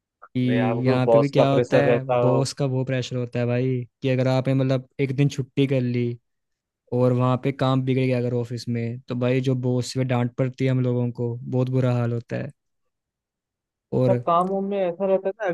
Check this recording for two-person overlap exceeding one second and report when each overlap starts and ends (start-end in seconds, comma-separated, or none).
0.8-2.4